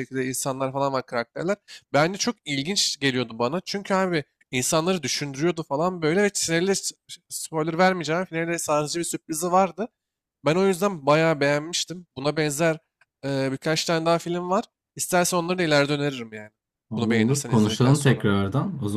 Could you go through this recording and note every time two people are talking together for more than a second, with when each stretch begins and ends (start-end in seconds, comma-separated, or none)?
17.0-18.3